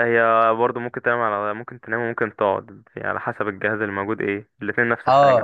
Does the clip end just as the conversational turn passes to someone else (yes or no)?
yes